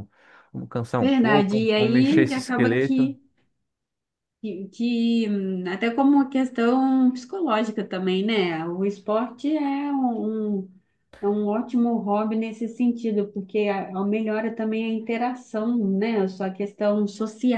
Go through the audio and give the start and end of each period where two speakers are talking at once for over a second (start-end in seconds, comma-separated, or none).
1.0-3.1